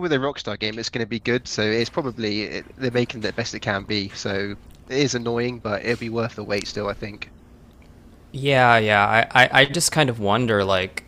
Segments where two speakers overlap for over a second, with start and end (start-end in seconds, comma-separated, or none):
none